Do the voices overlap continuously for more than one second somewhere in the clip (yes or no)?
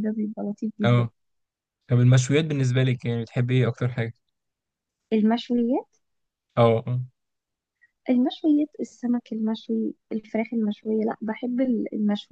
no